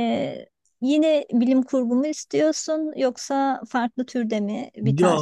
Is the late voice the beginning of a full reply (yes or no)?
yes